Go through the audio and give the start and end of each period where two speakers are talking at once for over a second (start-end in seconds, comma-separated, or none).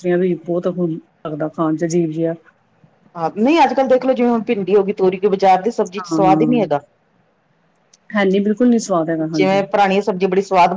none